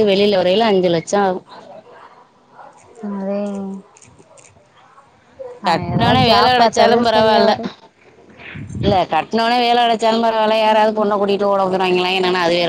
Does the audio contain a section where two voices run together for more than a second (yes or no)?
yes